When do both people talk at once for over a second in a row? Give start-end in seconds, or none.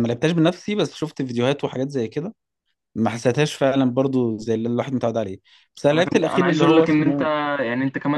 5.9-7.2